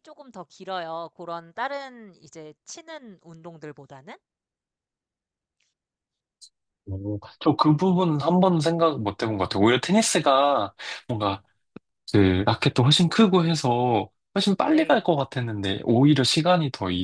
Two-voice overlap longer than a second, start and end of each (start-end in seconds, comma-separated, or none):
none